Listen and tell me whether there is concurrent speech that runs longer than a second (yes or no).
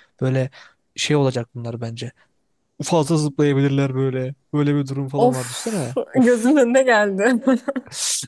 yes